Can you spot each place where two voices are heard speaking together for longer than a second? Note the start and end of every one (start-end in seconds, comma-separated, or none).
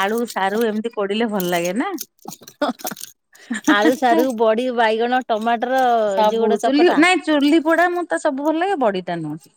none